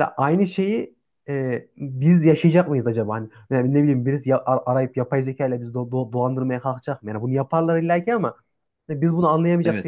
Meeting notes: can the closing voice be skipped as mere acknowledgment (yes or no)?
no